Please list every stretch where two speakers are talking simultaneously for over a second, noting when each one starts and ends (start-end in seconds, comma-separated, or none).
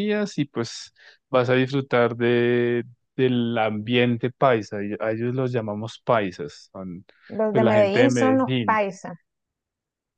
7.5-8.8